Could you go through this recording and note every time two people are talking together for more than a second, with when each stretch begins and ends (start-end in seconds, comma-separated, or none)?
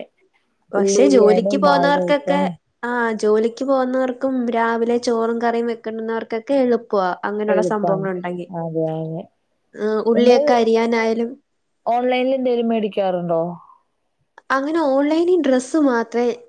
0.8-2.4